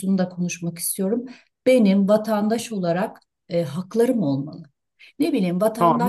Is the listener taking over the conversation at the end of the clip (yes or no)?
yes